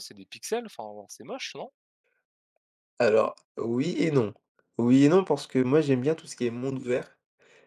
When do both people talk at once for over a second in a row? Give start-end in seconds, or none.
none